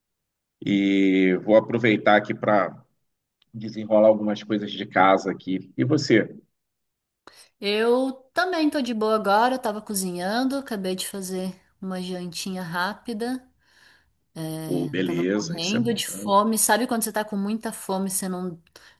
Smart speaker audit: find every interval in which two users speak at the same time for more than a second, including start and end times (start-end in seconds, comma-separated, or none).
14.6-16.3